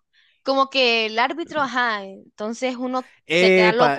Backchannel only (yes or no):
no